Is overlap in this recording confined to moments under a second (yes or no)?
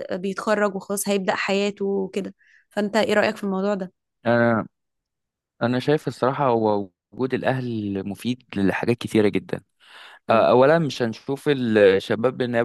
yes